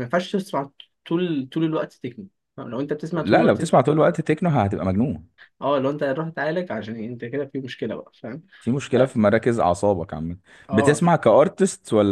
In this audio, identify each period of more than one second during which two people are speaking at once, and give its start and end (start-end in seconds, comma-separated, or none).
none